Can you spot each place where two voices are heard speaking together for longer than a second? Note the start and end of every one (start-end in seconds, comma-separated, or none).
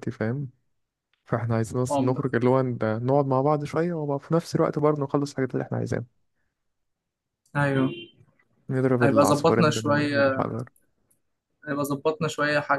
9.0-10.4